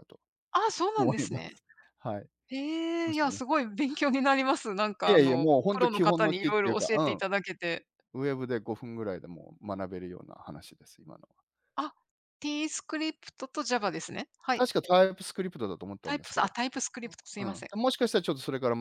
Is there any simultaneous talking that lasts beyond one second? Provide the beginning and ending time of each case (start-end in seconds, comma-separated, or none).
5.1-7.0